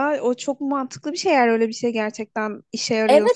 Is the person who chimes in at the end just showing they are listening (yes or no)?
no